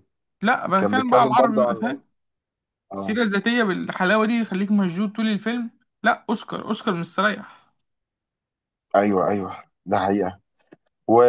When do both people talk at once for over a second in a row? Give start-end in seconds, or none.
0.8-2.0